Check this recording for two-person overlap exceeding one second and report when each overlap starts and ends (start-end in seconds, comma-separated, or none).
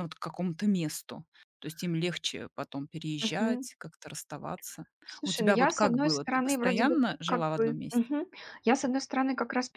5.2-8.0